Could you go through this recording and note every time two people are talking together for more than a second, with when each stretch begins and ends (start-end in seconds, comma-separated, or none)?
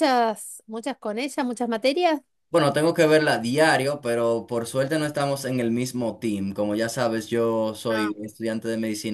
none